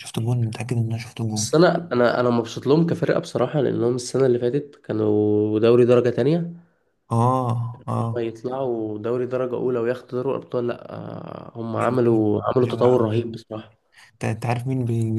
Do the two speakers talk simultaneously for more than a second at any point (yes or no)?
yes